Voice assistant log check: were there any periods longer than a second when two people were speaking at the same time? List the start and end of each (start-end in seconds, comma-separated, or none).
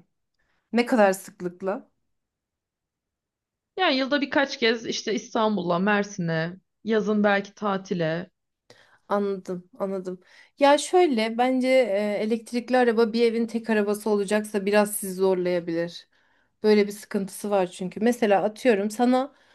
none